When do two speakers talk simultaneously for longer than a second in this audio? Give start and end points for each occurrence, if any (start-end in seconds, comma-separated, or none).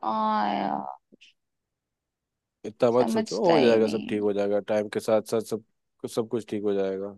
3.0-4.2